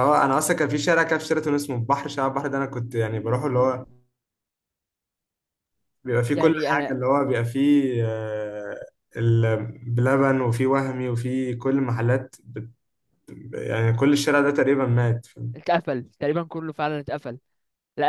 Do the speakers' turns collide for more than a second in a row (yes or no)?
no